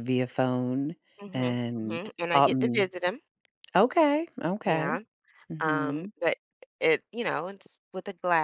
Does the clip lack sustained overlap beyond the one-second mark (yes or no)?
no